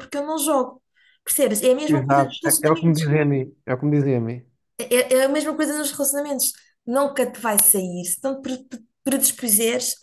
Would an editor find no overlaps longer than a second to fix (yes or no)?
no